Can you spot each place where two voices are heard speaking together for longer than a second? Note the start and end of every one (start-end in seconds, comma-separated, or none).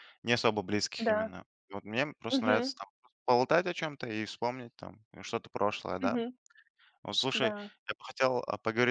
none